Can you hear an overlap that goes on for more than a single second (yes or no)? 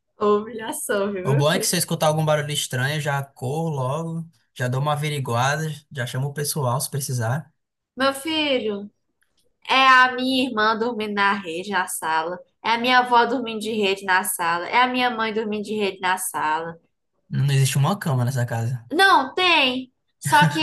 no